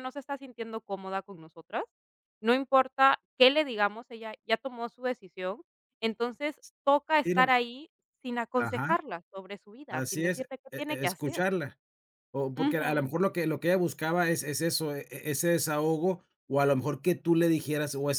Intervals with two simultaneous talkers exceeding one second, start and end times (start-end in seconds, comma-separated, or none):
9.9-11.4